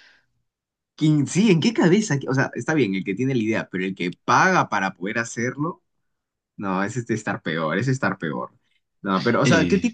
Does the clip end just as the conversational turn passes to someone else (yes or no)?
no